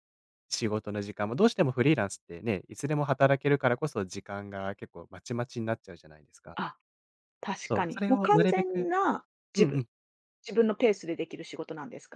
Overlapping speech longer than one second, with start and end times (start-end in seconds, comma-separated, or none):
7.7-8.9